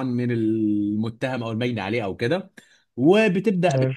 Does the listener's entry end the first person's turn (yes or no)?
no